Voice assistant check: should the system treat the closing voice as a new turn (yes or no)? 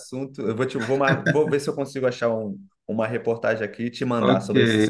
yes